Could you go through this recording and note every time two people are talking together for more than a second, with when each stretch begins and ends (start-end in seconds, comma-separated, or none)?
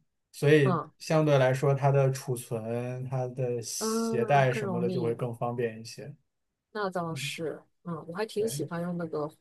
3.8-5.2